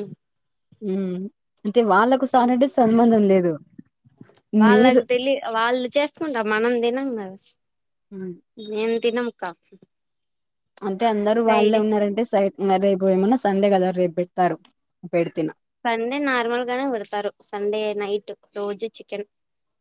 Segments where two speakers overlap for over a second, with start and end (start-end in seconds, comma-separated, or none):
none